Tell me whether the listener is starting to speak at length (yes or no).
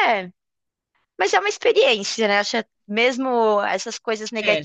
no